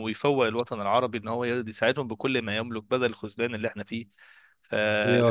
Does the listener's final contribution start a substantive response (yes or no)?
no